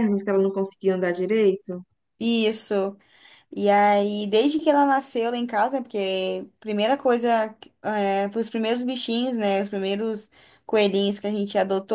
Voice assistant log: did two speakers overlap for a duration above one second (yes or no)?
no